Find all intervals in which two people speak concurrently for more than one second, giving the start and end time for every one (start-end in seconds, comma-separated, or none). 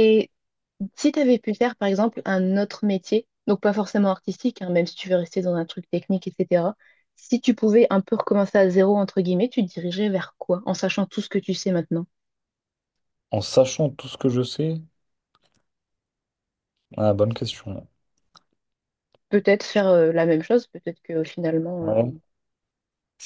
none